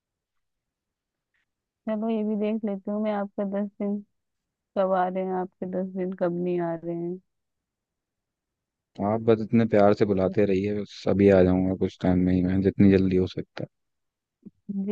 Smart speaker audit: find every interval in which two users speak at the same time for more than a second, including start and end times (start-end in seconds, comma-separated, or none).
none